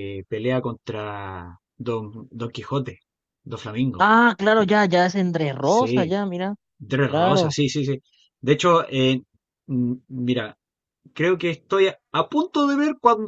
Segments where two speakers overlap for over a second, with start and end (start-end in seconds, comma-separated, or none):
none